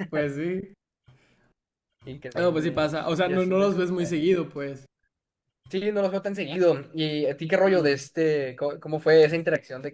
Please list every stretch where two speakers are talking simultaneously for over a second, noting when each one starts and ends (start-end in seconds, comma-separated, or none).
2.4-4.2